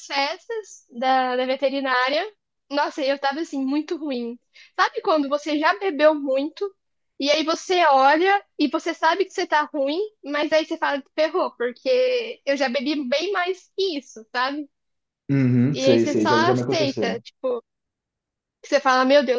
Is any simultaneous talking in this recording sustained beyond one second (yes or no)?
yes